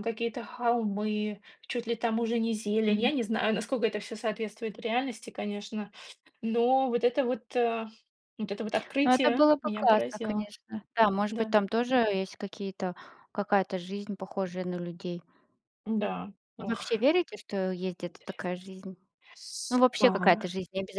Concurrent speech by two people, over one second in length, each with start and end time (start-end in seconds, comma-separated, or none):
9.0-10.5